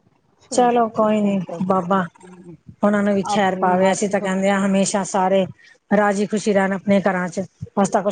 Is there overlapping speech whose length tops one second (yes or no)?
no